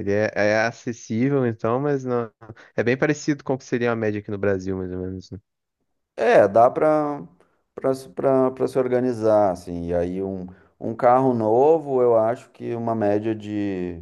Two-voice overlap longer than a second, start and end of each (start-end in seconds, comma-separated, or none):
none